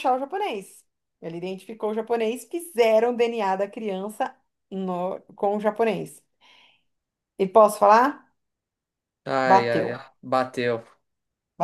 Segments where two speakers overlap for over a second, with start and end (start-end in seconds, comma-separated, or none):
none